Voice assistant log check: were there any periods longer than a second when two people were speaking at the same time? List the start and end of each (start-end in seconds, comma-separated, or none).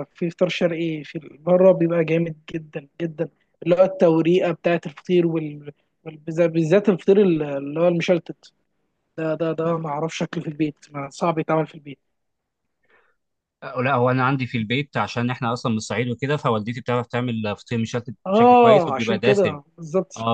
18.3-19.6